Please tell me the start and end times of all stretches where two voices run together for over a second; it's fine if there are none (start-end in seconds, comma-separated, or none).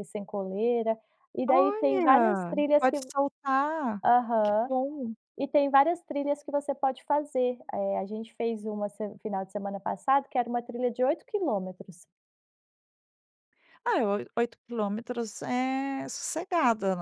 1.5-3.0